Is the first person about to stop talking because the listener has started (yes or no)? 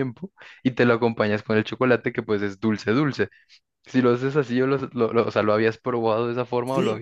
yes